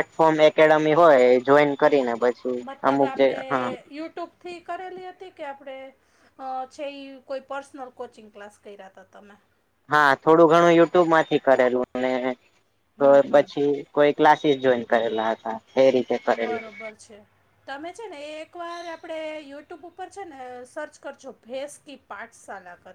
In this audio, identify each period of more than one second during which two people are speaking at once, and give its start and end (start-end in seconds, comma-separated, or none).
none